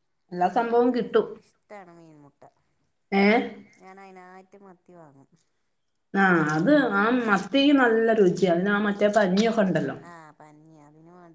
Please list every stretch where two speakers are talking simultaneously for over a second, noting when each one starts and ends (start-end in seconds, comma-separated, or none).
none